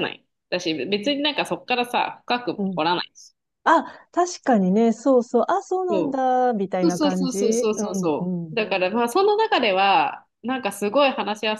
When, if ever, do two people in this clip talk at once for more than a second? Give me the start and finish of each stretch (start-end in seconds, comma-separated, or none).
6.8-8.6